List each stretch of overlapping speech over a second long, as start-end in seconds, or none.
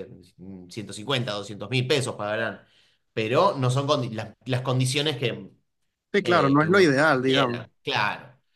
6.2-7.7